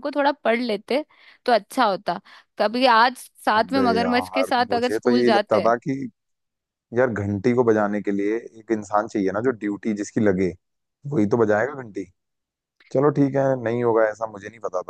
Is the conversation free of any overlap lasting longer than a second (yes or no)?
no